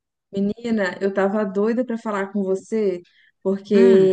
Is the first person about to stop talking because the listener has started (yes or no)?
no